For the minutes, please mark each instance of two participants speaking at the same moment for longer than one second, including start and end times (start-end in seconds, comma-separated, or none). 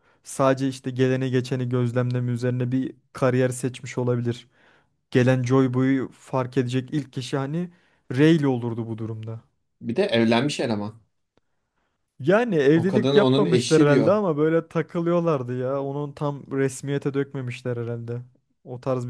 12.7-14.2